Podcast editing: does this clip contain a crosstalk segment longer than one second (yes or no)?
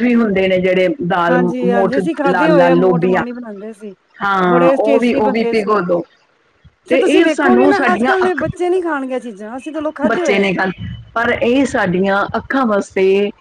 yes